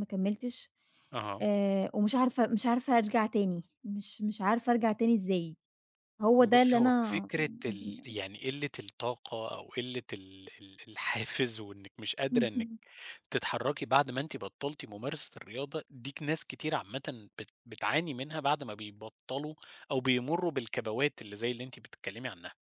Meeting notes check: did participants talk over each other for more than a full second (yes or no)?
yes